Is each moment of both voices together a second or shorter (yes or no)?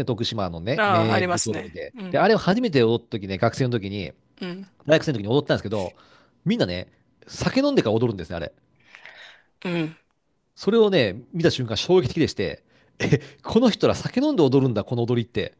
no